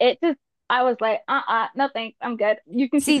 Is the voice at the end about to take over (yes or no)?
yes